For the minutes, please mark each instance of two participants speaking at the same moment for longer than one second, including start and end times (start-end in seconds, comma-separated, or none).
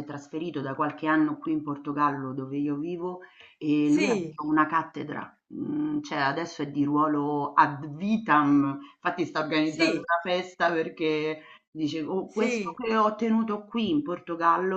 none